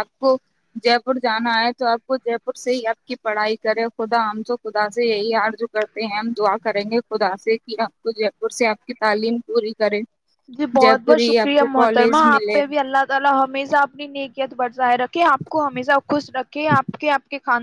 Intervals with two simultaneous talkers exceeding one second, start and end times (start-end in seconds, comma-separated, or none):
10.8-12.6